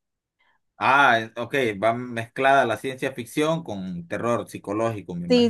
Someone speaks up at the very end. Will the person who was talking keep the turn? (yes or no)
no